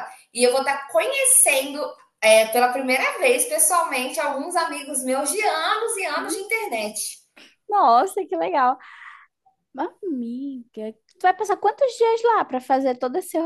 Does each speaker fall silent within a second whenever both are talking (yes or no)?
yes